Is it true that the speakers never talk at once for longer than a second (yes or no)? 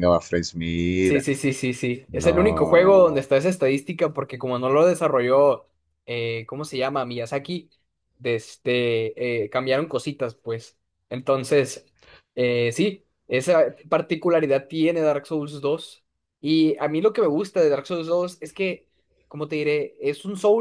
no